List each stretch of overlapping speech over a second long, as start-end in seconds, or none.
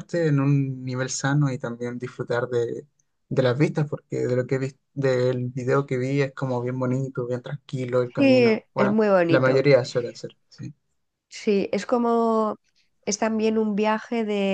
8.2-9.6